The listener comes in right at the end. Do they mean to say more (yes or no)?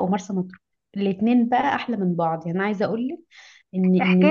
yes